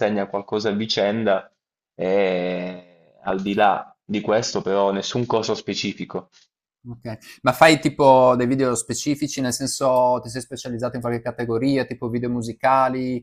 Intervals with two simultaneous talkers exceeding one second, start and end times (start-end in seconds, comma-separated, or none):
none